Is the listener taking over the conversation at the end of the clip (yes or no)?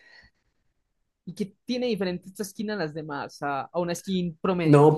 yes